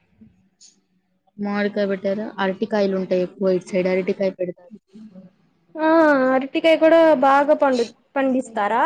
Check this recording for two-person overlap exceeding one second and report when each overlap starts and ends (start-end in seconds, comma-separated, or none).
none